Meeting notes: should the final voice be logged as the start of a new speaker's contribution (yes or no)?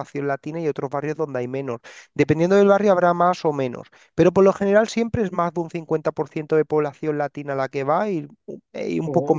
no